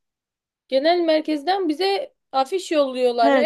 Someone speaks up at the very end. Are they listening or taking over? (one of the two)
taking over